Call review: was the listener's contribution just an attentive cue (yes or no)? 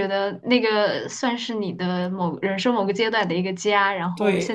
no